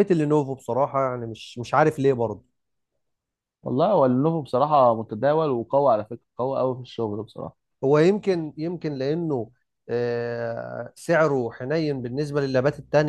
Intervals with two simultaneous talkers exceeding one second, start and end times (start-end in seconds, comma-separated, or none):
none